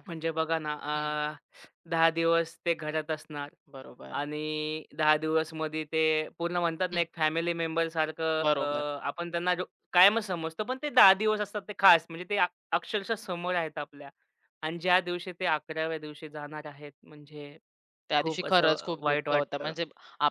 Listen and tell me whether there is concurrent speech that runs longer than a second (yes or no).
yes